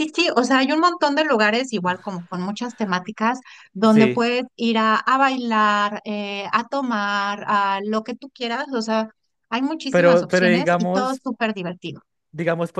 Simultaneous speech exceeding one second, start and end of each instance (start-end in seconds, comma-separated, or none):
9.9-11.2